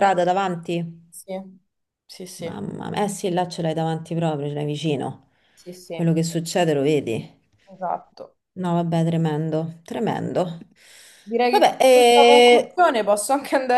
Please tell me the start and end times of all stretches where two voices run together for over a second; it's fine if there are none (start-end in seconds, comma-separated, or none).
11.5-12.8